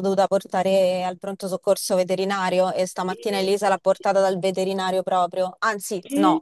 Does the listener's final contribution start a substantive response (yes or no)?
no